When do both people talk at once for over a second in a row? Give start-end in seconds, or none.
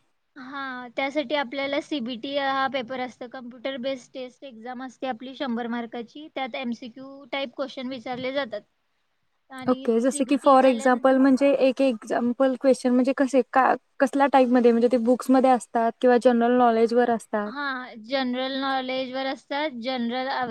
9.7-11.2